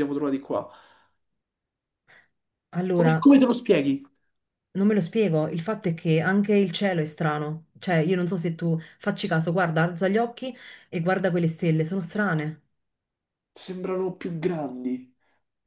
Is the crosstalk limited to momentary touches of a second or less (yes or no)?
yes